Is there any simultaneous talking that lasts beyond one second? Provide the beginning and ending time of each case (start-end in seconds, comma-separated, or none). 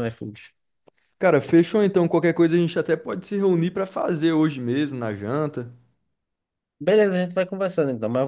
none